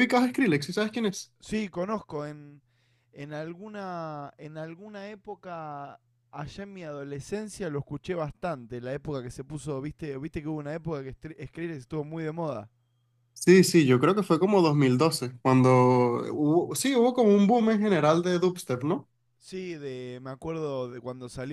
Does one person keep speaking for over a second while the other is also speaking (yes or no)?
no